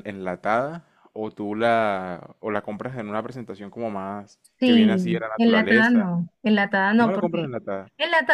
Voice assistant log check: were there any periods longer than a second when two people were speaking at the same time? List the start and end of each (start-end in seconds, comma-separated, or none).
4.6-6.1